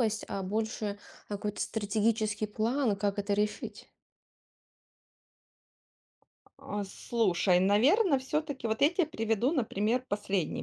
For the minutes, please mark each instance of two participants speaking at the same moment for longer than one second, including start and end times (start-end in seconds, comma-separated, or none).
none